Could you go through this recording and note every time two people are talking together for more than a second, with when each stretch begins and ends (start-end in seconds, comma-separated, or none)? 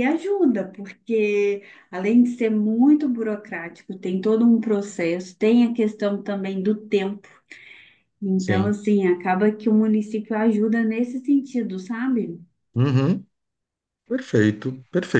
none